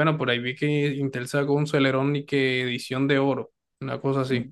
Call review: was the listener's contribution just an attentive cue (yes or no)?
yes